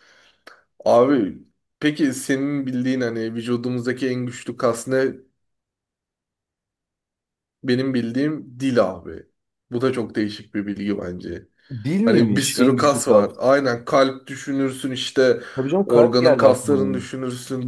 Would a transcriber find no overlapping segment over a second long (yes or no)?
no